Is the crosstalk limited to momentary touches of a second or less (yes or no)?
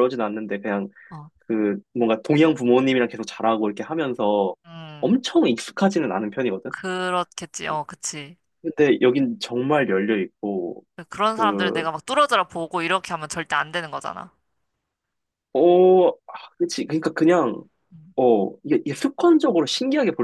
yes